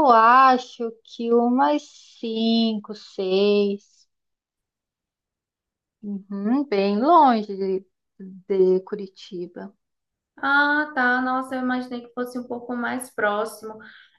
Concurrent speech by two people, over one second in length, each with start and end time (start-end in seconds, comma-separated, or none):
none